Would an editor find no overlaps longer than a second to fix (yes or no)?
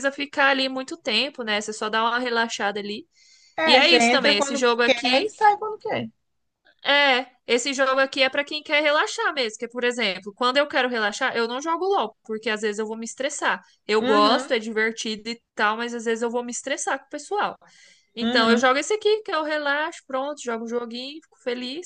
no